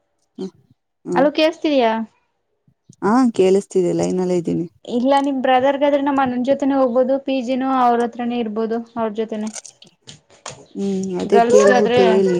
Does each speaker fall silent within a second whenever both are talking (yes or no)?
yes